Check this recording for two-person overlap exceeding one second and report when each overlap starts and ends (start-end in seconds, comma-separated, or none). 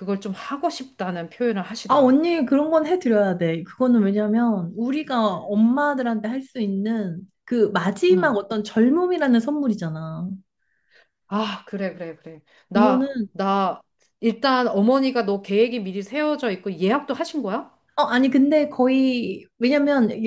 none